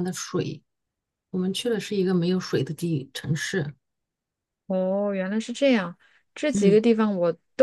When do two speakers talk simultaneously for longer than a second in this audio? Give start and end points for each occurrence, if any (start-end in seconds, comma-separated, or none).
none